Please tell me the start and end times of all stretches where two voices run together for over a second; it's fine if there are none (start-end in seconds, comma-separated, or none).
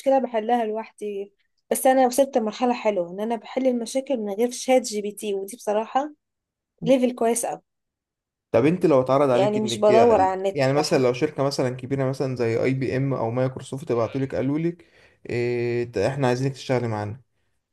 none